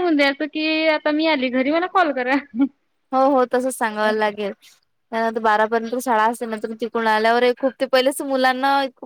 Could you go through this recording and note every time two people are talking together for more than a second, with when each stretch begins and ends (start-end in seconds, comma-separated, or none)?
none